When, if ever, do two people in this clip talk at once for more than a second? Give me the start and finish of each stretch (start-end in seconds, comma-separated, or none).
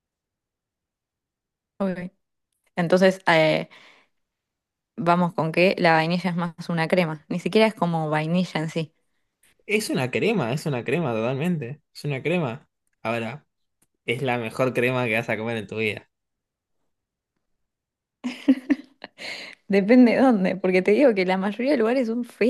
none